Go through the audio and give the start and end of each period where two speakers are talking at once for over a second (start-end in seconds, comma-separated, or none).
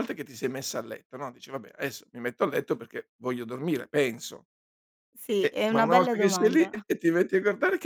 5.4-6.7